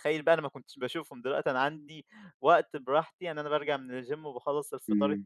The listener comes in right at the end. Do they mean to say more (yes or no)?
no